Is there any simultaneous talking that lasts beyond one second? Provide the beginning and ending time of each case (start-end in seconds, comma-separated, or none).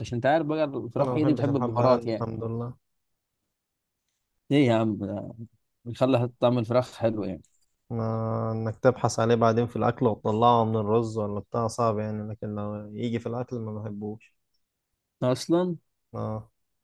1.0-2.3